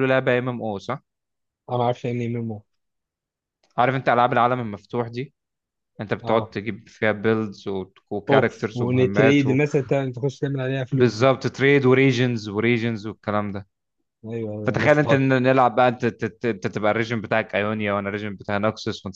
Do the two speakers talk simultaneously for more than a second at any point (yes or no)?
yes